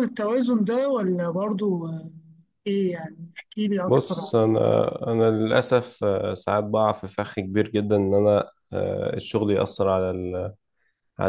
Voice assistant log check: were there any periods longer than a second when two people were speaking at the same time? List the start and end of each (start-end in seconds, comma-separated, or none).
none